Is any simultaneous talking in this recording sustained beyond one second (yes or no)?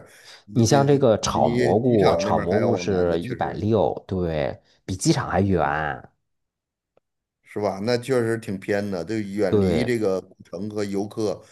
yes